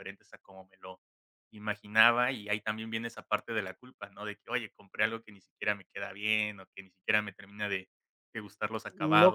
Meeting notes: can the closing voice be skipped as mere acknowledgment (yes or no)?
no